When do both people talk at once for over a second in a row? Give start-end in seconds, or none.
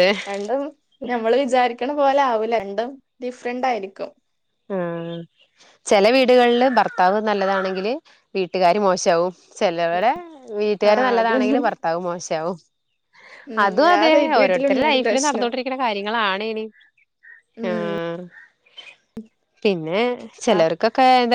13.6-15.5